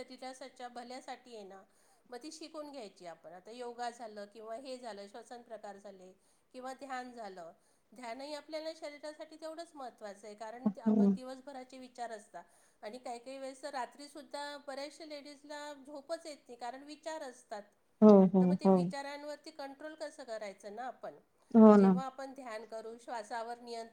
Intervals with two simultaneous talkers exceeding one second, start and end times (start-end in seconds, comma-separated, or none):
none